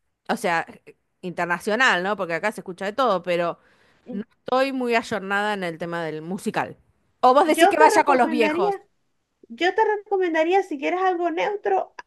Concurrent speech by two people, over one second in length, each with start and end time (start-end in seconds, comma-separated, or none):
7.5-8.7